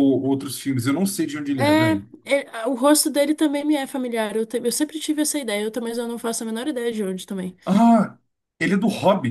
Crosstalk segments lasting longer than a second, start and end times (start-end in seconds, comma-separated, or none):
none